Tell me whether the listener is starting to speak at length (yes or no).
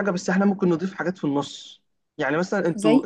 no